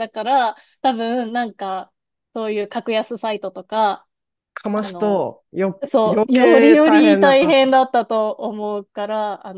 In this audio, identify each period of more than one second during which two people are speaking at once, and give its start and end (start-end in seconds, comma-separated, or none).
5.9-7.8